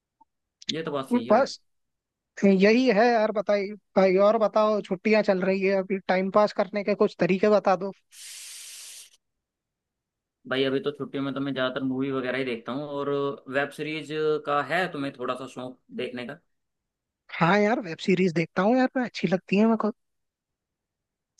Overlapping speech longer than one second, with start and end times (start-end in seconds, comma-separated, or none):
none